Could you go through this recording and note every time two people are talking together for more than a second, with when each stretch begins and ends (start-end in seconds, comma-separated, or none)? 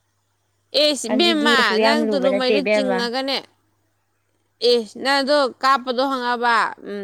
1.1-2.6